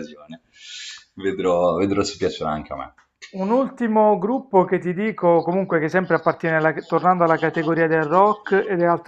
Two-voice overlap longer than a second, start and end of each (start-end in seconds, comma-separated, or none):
none